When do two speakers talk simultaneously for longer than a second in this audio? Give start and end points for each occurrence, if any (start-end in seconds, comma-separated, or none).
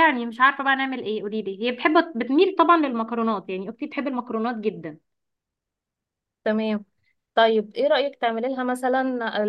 none